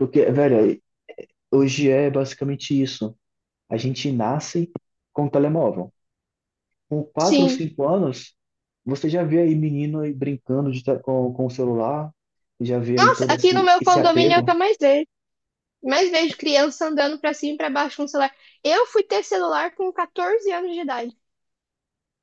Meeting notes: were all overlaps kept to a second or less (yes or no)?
no